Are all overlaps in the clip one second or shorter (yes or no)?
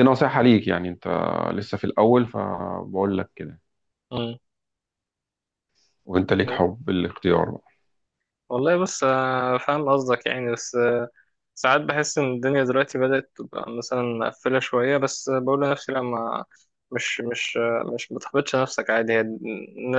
yes